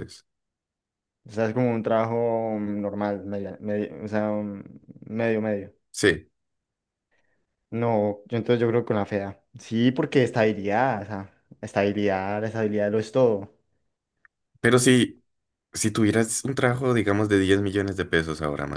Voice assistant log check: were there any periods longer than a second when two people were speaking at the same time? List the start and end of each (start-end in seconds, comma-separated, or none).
none